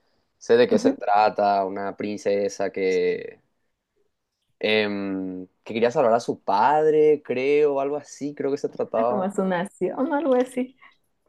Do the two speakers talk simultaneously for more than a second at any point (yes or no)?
no